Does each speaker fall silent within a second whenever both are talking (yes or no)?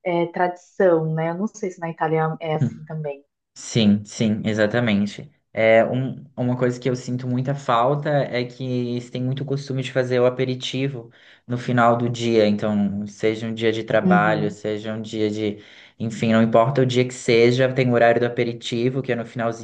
yes